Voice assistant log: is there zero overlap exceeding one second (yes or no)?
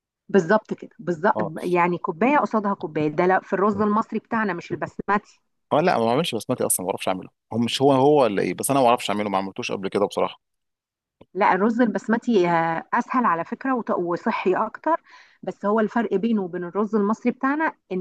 yes